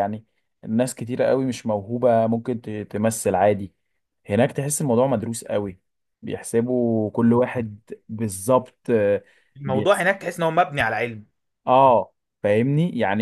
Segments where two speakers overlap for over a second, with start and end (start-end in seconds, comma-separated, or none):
none